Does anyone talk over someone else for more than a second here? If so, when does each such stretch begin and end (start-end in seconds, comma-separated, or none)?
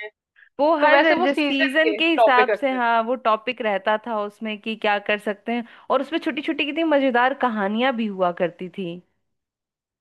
0.8-2.8